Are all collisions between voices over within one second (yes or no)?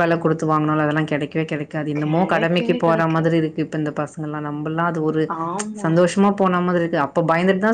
no